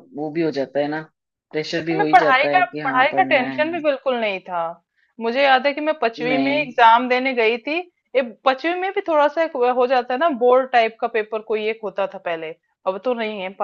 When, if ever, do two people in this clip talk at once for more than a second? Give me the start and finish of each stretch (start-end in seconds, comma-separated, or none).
1.8-3.7